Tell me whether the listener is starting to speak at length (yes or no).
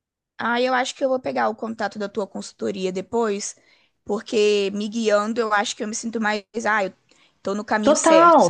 yes